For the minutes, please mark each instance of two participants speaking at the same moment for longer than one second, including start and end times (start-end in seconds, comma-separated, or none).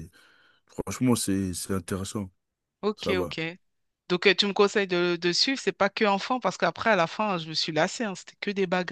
none